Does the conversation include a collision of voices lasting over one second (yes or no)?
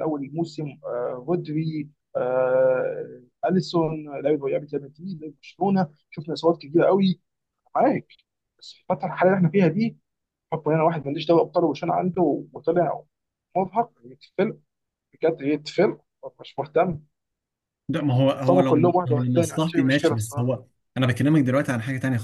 yes